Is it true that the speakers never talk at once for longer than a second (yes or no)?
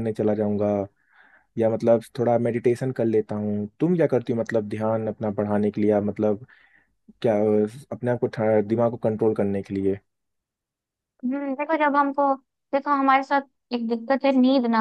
yes